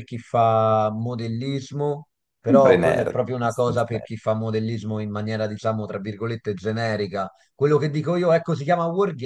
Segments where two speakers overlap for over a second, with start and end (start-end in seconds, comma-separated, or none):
2.5-4.1